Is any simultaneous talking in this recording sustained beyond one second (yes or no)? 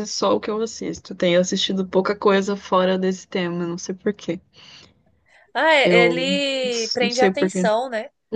yes